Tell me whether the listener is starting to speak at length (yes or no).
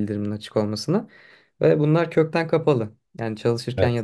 no